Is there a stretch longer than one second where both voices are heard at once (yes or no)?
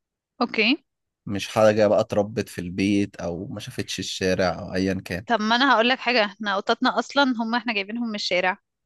no